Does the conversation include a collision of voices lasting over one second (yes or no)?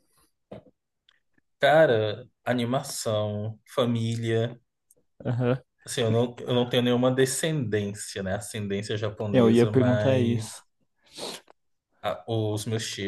yes